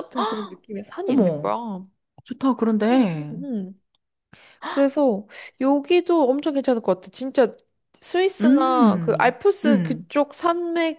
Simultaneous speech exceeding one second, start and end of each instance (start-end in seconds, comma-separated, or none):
8.4-10.1